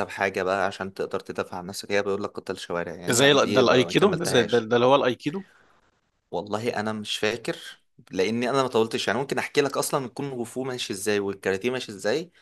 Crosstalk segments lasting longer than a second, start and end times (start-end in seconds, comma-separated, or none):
3.1-4.7